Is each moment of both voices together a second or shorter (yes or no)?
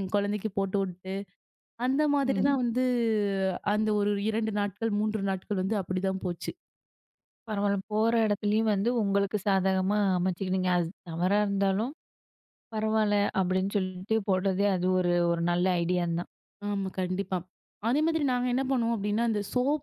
yes